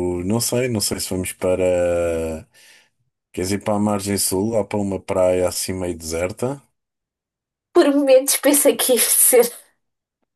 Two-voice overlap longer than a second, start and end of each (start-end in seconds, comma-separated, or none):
none